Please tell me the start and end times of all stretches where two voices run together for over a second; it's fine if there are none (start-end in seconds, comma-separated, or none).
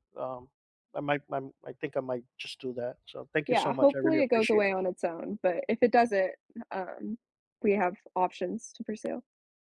3.5-4.7